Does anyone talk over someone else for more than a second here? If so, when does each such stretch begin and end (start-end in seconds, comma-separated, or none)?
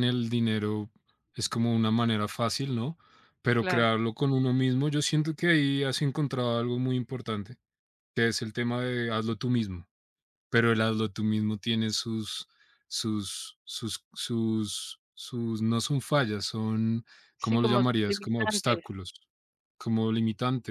17.4-18.8